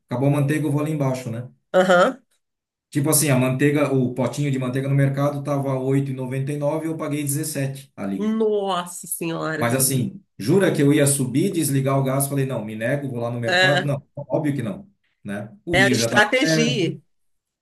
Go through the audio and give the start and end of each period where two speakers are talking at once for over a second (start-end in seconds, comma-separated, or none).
15.7-17.0